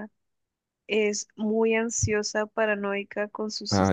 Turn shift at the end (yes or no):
no